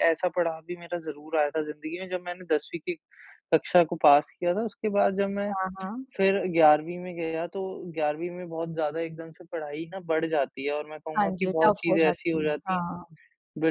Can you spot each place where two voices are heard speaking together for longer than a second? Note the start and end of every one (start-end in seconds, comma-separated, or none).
11.2-12.8